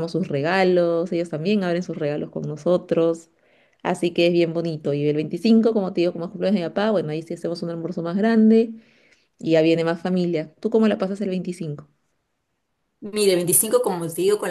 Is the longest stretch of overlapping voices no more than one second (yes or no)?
yes